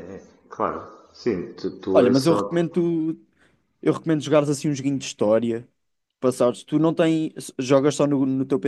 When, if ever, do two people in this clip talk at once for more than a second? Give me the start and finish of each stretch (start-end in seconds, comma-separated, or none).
none